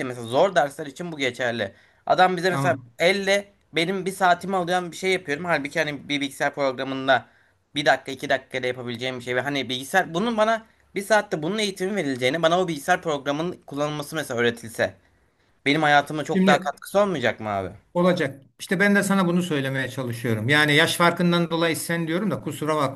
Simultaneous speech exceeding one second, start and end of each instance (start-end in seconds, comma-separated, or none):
none